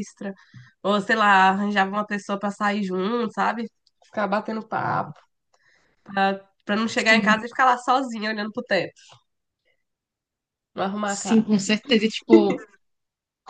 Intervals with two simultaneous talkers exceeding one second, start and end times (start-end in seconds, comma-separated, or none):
none